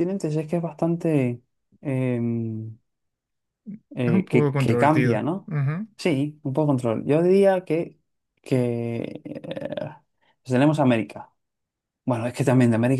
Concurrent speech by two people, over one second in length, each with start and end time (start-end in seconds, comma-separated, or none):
4.0-5.5